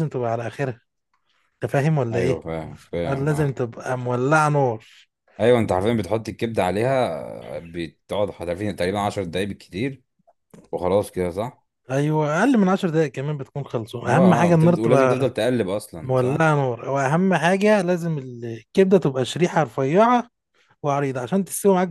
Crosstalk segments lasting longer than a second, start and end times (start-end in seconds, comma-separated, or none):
14.1-15.3